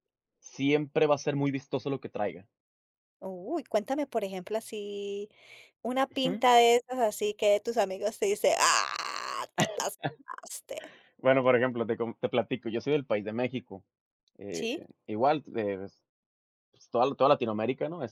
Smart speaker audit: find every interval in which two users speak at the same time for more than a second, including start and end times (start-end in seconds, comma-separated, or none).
none